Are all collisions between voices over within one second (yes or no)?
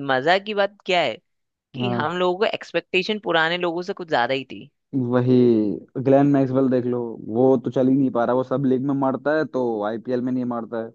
yes